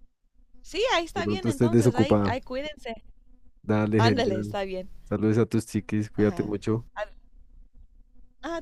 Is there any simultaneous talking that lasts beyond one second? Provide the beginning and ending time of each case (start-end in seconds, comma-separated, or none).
1.1-2.4